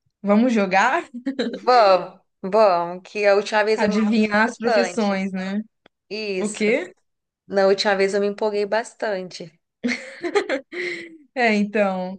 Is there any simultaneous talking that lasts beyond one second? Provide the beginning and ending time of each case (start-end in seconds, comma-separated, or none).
3.8-5.2